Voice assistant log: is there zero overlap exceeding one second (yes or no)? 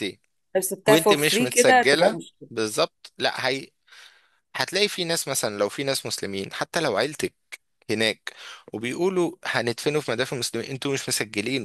no